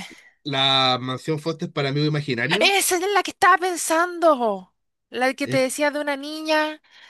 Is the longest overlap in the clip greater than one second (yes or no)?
no